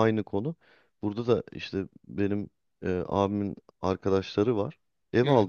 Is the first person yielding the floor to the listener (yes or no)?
no